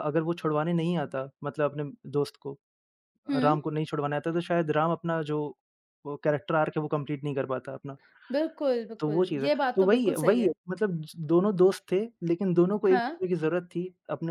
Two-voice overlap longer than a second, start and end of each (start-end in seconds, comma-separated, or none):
9.0-10.5